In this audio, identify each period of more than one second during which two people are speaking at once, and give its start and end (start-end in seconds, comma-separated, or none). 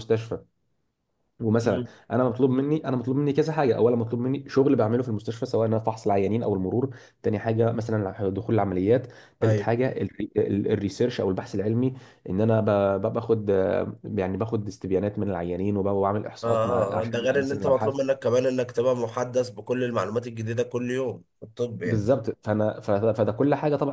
16.4-18.0